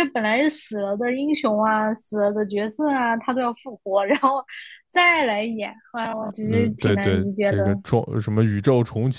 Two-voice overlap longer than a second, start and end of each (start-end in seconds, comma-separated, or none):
6.4-7.8